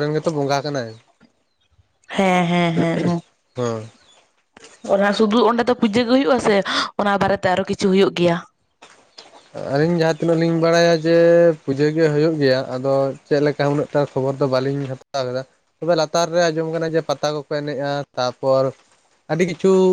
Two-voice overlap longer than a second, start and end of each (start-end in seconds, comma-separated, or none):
none